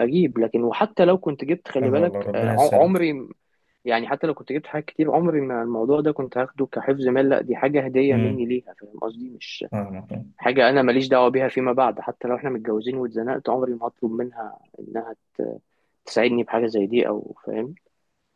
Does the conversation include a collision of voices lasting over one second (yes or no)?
yes